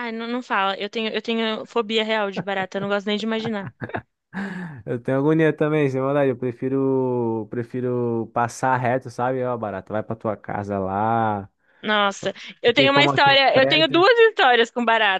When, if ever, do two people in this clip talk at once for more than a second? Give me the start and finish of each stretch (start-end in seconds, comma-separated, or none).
12.2-14.1